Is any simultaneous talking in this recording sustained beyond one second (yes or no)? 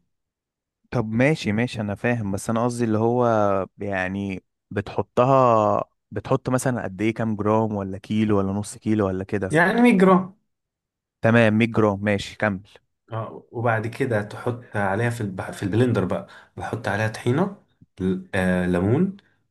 no